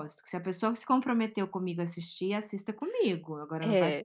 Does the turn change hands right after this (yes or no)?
no